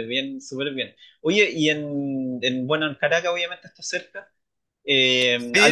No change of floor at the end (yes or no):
yes